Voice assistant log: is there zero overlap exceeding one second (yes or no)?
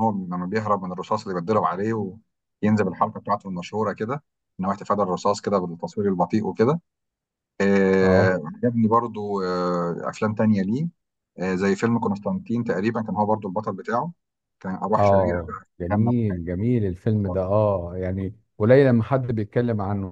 no